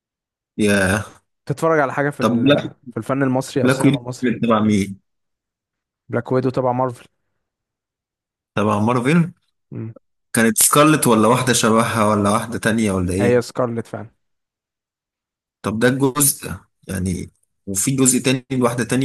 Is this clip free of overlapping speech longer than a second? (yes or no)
yes